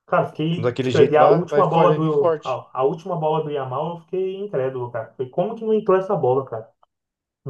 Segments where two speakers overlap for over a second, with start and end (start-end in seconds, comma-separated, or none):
0.6-2.6